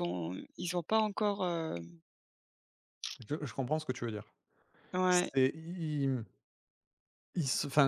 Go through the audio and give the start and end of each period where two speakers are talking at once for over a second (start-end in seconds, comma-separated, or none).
none